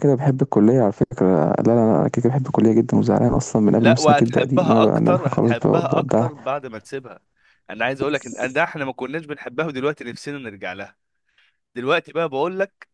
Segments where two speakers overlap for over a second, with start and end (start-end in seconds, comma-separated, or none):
3.8-6.3